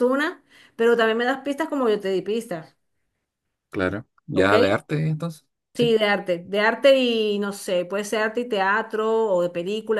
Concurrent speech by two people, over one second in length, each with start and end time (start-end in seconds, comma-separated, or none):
none